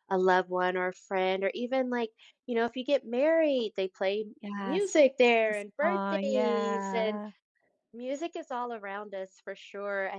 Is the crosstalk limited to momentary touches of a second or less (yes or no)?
no